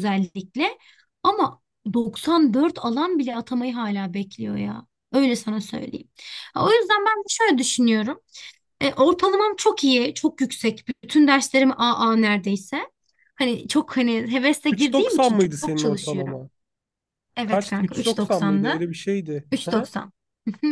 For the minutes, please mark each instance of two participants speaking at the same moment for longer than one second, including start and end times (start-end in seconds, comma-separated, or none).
14.7-16.4, 17.4-18.8